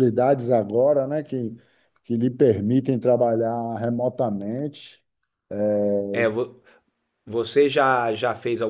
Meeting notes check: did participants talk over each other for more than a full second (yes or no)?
no